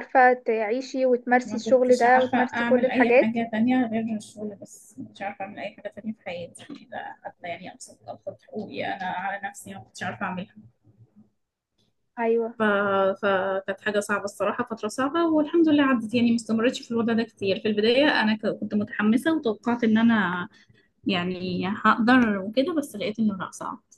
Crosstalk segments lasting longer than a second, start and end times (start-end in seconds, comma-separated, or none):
1.4-3.3